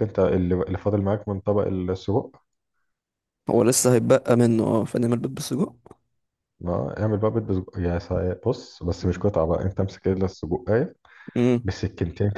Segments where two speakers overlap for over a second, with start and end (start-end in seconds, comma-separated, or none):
none